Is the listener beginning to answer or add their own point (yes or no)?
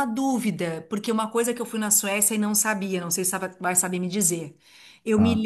no